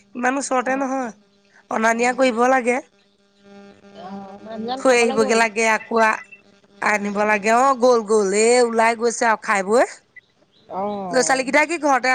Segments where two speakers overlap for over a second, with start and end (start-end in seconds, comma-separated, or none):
none